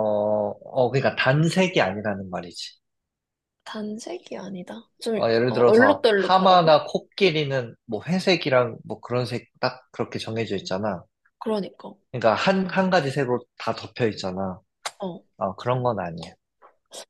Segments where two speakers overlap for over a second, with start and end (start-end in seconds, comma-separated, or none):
5.1-6.8